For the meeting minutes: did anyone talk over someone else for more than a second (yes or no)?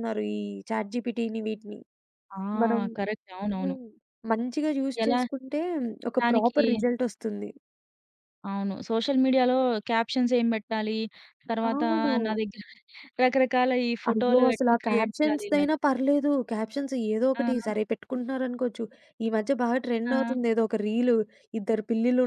yes